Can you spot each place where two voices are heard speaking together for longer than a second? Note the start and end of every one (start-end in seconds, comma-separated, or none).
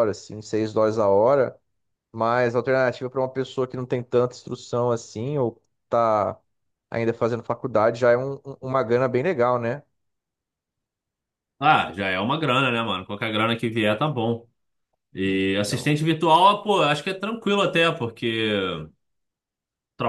none